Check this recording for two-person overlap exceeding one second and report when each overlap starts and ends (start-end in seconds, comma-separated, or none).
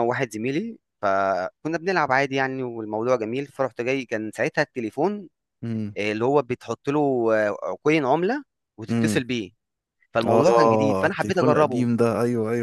10.3-11.9